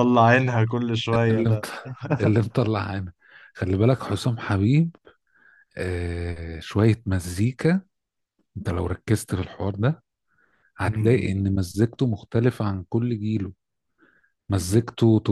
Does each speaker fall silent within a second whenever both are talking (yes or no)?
yes